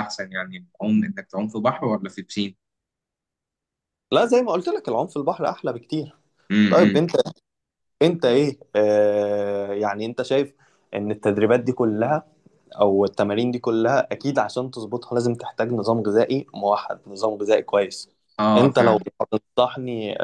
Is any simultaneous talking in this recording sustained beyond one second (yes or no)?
no